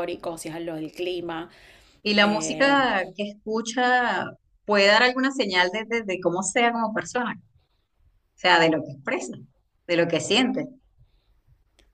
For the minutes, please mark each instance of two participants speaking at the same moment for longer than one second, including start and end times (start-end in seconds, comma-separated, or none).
none